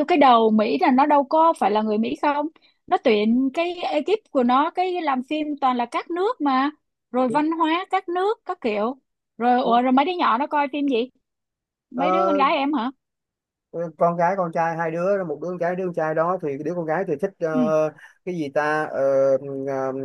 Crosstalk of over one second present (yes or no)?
no